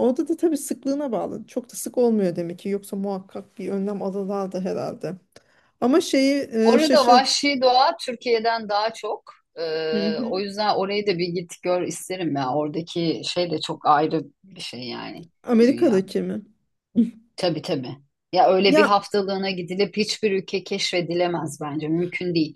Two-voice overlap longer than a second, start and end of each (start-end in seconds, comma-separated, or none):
none